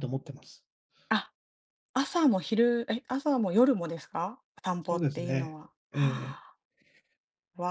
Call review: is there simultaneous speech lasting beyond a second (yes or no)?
yes